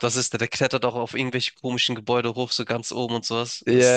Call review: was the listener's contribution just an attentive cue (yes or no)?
no